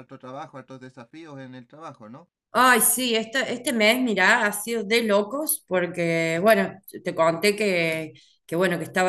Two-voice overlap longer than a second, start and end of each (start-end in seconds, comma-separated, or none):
none